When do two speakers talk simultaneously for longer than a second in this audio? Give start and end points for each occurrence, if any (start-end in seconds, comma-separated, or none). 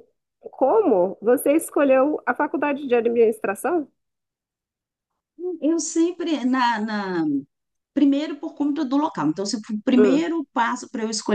none